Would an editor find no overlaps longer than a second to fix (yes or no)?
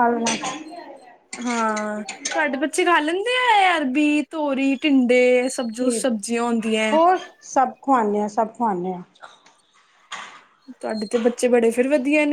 yes